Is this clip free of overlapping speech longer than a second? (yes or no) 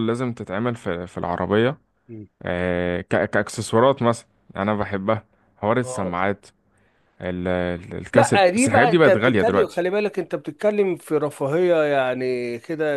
no